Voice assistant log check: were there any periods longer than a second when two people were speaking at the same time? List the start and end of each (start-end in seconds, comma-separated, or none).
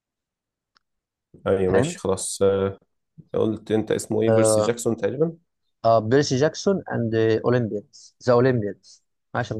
none